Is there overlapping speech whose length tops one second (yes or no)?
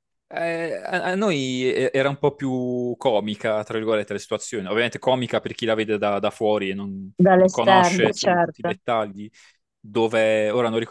yes